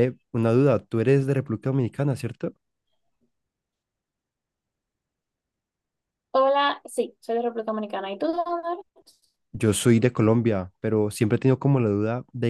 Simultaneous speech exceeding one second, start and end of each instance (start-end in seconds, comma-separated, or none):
none